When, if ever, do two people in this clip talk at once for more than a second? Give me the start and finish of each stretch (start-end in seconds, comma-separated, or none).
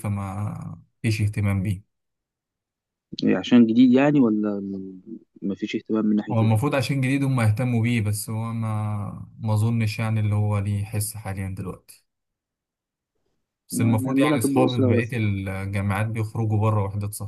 13.7-15.2